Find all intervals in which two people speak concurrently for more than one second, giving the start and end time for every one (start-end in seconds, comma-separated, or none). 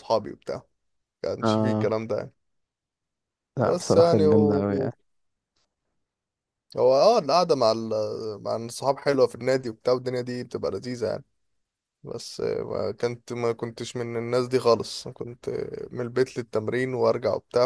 3.6-4.9